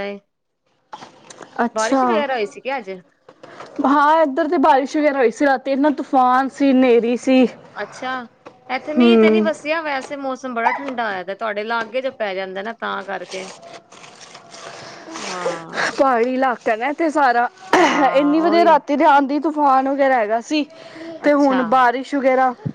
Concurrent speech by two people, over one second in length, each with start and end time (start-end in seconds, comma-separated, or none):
none